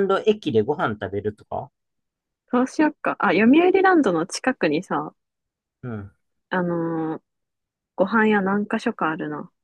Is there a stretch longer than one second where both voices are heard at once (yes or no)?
no